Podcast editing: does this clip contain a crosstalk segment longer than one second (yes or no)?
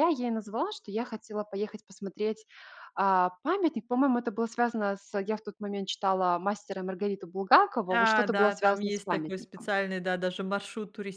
yes